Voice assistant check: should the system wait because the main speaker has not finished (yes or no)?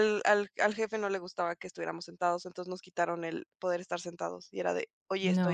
yes